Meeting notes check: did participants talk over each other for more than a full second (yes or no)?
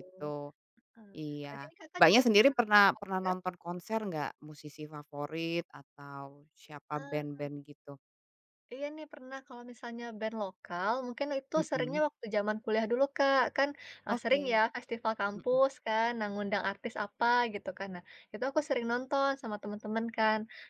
yes